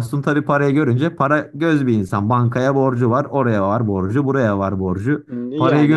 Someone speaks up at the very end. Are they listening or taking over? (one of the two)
listening